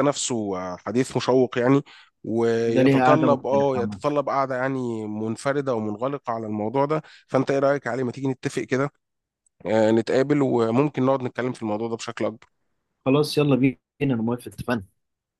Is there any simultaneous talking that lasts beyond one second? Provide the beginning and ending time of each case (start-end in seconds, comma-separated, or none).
2.7-4.0